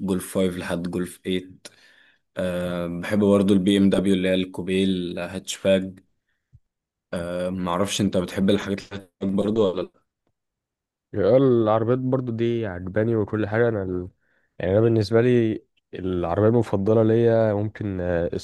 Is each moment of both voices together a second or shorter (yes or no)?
yes